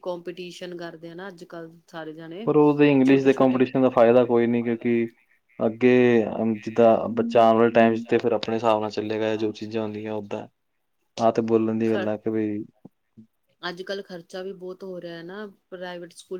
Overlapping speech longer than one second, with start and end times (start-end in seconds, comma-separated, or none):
none